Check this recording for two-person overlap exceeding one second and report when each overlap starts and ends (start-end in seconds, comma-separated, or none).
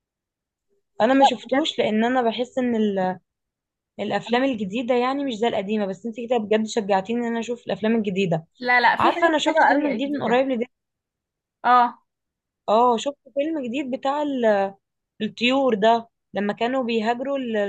9.0-10.4